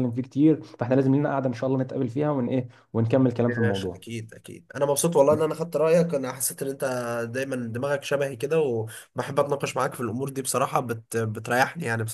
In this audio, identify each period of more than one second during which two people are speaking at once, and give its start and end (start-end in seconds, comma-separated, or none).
none